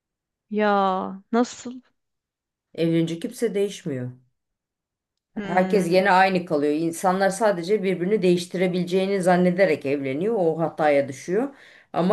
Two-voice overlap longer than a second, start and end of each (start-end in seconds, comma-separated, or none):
none